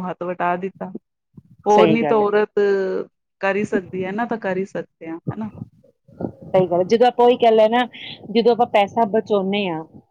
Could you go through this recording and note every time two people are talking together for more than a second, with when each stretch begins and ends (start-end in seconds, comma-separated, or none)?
none